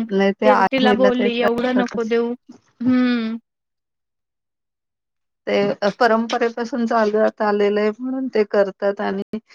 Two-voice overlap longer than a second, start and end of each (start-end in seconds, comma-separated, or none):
0.7-2.1